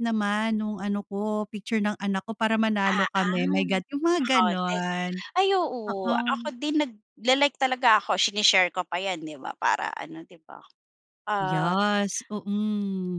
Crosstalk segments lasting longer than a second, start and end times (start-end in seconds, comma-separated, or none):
2.9-4.9